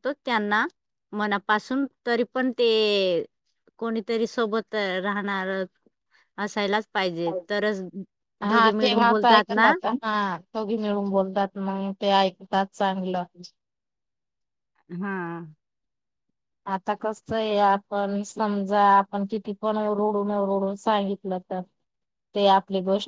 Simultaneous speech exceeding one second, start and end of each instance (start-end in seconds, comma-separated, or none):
8.5-9.7